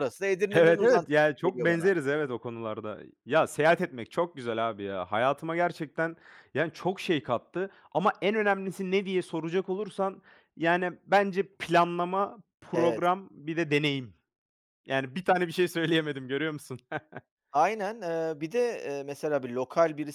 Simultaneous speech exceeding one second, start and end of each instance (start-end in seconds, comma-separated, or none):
0.5-1.9